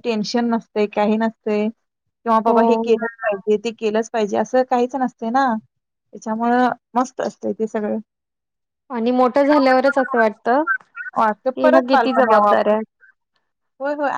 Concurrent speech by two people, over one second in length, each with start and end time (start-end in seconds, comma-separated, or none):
11.2-12.7